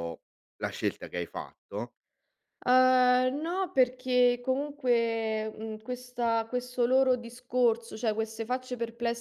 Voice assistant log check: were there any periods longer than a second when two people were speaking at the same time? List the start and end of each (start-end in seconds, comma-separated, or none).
none